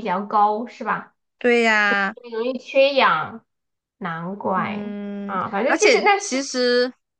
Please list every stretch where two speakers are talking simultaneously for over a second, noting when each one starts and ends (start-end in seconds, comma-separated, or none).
4.5-6.4